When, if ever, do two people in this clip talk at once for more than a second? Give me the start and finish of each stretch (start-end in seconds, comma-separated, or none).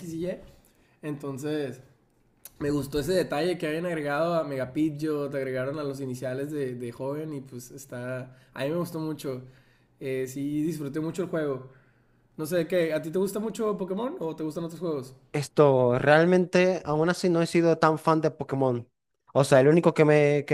none